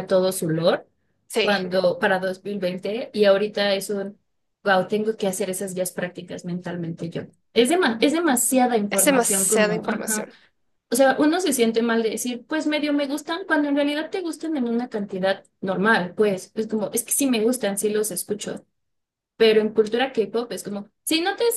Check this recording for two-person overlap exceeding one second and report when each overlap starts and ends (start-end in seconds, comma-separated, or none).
8.9-10.3